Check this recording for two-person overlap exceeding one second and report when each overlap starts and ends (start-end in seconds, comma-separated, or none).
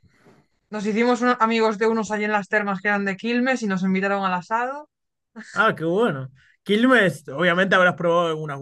none